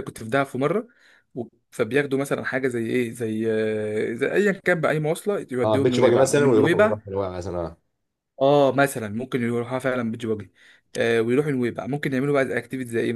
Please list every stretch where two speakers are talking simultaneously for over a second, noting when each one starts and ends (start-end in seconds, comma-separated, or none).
5.6-7.0